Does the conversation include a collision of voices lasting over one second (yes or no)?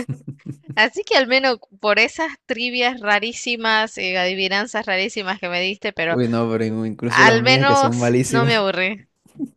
yes